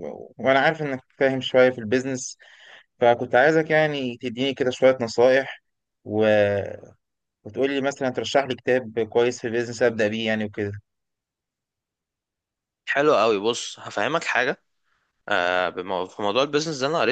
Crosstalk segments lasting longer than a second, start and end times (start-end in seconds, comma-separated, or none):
none